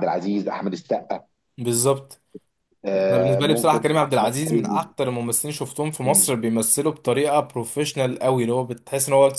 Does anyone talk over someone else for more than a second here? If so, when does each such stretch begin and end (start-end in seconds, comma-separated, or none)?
3.1-4.8